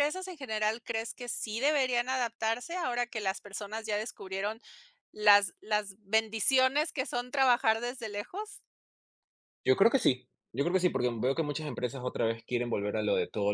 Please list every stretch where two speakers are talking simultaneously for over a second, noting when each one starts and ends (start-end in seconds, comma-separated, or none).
none